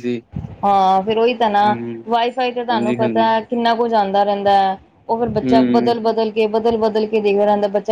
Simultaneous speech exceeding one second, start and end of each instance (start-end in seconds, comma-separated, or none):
none